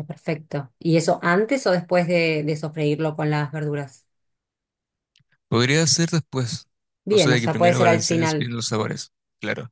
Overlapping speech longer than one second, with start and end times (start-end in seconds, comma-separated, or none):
7.1-8.5